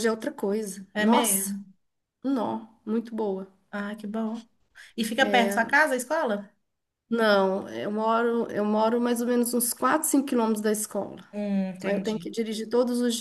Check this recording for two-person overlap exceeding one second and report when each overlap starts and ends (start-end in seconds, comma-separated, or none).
none